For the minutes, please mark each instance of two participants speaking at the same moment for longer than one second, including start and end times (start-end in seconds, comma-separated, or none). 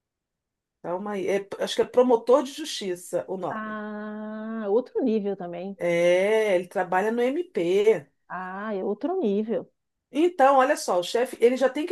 none